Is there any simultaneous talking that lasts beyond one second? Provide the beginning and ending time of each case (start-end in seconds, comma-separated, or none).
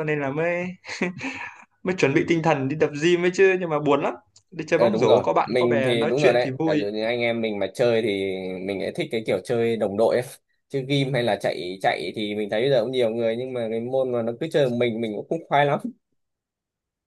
4.8-6.8